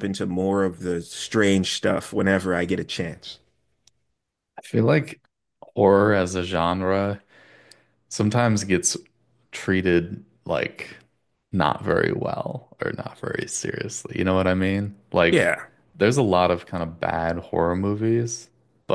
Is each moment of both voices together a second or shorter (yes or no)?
yes